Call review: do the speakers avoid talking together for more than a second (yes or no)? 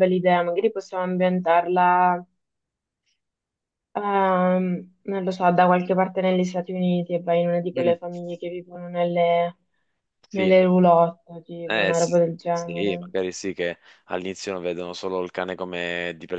no